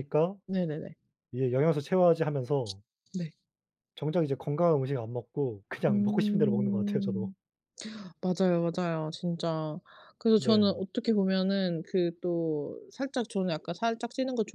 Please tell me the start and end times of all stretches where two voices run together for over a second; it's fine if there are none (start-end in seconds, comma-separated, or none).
5.9-7.3